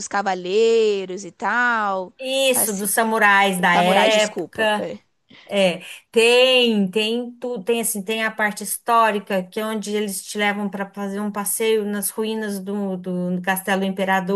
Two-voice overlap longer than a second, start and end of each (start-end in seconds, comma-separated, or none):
3.6-4.9